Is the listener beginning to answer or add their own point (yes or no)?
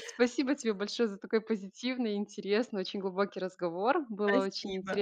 no